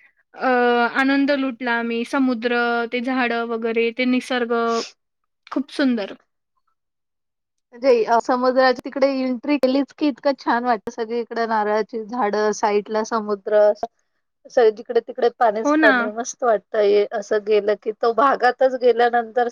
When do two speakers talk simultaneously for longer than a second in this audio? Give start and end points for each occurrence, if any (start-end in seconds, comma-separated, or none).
none